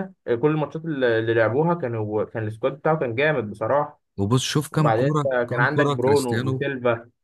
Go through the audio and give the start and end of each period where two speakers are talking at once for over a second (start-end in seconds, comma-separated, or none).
4.7-6.6